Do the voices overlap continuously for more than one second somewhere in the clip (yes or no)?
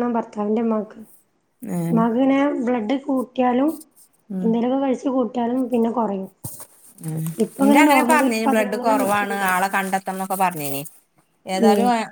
yes